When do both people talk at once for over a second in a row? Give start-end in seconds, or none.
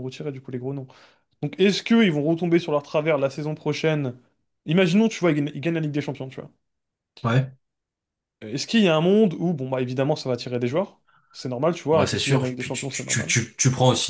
11.9-13.3